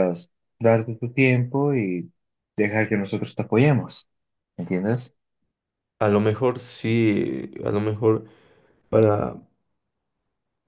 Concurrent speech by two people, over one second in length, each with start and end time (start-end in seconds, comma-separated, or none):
none